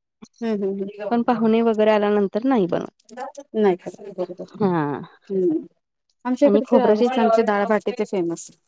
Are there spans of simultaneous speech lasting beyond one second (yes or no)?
no